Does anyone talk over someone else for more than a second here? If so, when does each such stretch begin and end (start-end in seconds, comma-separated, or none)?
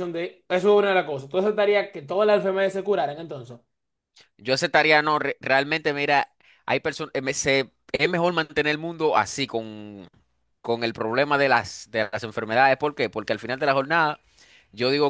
none